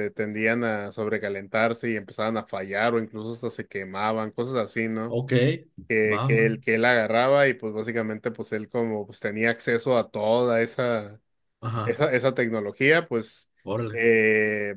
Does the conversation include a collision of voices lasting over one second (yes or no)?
no